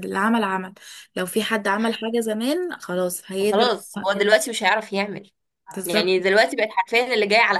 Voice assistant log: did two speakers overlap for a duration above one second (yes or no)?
no